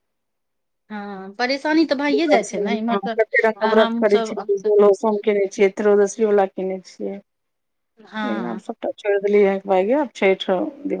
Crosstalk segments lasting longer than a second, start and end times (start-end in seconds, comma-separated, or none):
2.1-3.5